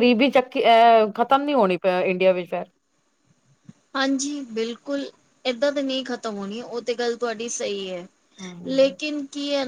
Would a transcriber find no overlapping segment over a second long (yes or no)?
yes